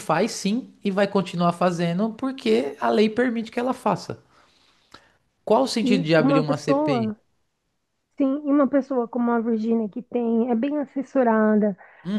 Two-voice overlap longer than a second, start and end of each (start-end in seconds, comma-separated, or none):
5.8-7.1